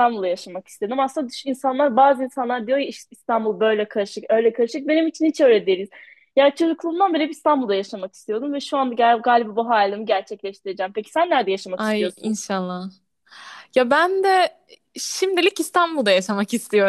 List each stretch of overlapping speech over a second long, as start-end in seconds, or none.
none